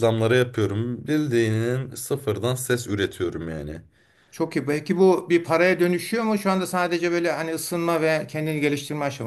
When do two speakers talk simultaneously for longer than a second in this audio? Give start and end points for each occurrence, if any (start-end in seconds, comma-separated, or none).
none